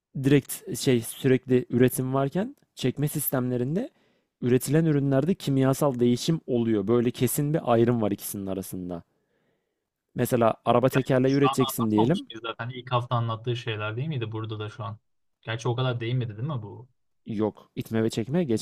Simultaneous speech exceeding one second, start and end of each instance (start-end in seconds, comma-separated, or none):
10.9-12.3